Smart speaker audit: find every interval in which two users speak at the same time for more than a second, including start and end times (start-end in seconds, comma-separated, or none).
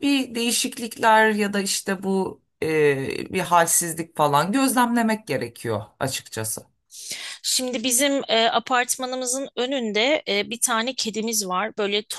none